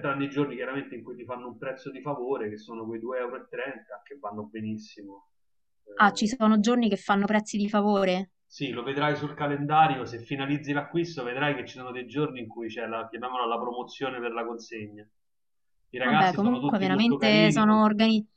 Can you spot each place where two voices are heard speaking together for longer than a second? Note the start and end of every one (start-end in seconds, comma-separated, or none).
16.0-17.8